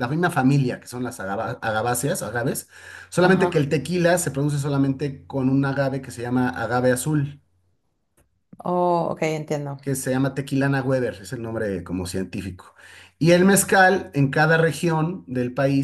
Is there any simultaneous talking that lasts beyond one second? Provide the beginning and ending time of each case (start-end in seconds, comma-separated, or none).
none